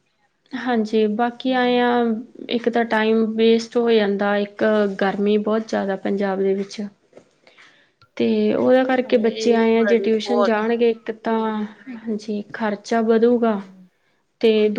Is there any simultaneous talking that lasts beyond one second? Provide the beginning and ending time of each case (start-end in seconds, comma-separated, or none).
9.3-10.6